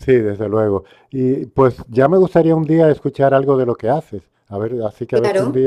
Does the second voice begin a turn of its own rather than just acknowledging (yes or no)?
yes